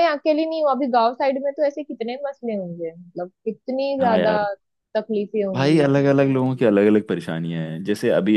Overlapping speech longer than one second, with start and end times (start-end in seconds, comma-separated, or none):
none